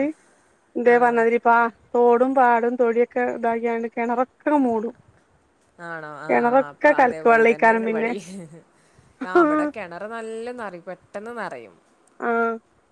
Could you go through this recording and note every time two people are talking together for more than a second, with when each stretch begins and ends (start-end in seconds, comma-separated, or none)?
6.3-8.1